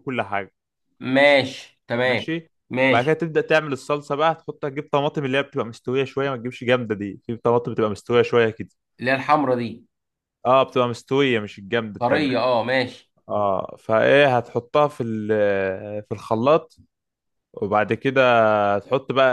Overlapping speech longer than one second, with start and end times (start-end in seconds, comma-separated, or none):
none